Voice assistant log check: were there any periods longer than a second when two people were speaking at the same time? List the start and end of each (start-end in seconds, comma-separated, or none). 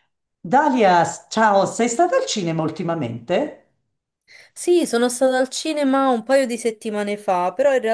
none